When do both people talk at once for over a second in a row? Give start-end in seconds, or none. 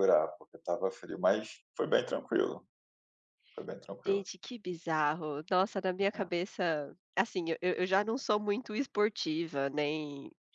none